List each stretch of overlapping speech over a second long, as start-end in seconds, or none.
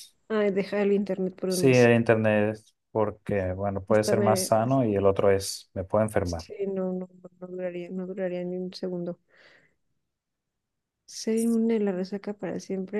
none